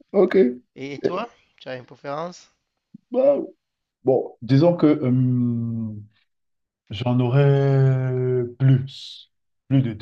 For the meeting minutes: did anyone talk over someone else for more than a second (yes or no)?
no